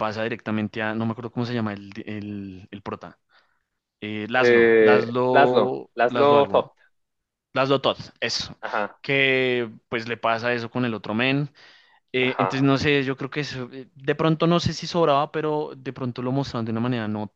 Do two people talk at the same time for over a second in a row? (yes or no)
yes